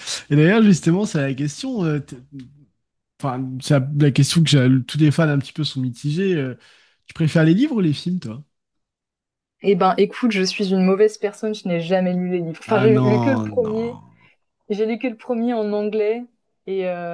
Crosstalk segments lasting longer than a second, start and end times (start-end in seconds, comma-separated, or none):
12.7-13.9